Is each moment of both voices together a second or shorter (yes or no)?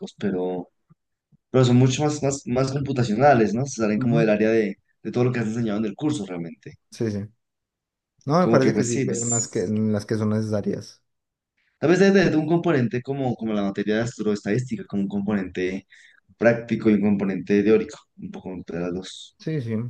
no